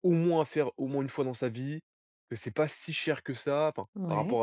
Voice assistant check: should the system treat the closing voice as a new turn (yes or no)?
no